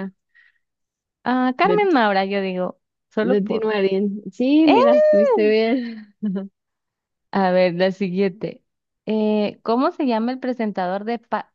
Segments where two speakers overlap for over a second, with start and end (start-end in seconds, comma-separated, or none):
none